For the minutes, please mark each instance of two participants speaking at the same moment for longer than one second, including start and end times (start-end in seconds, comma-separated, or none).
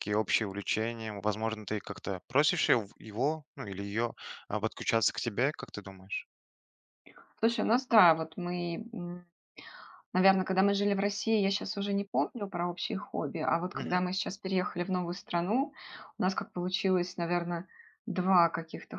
none